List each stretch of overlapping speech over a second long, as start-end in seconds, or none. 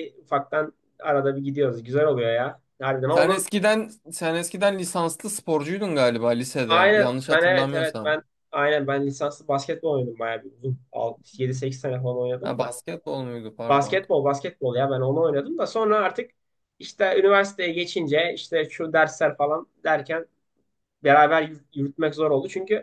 6.7-8.2